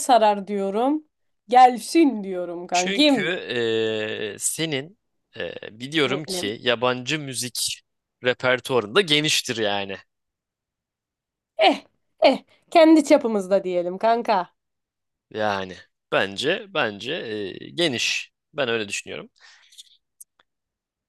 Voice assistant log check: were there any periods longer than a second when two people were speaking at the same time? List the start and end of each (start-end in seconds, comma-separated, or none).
none